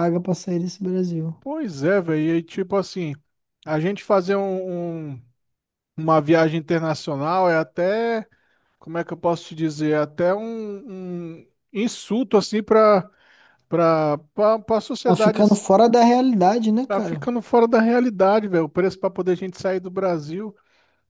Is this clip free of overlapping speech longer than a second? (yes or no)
yes